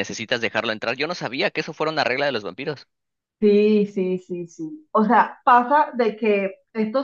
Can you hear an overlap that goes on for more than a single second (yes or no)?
no